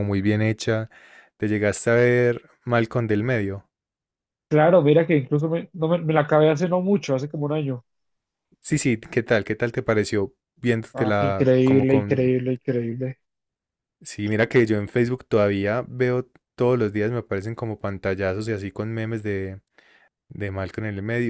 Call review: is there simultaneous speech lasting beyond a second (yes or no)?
yes